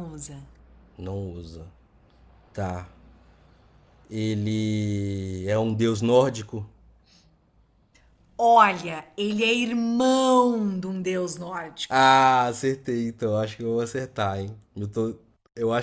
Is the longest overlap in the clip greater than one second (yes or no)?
no